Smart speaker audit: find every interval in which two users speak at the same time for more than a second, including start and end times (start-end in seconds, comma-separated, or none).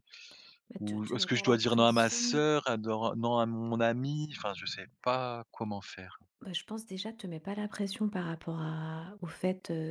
0.8-2.4